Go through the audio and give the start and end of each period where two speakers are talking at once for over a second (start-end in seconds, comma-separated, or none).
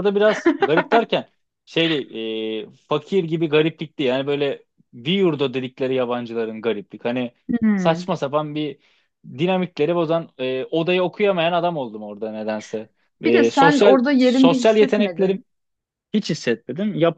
13.2-15.4